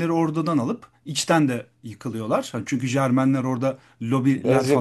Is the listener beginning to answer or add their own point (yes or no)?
yes